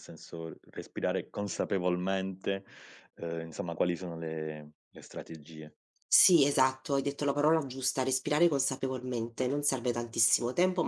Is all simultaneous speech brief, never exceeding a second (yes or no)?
yes